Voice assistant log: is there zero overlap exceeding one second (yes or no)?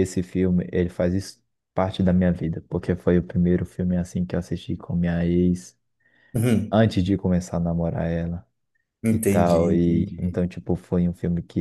no